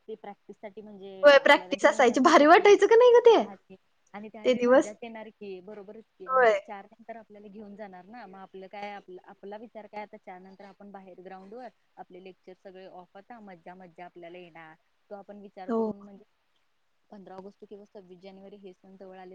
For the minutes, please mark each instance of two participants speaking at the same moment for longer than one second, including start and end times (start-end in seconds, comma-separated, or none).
1.4-2.7